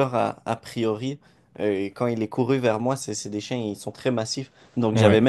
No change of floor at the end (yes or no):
yes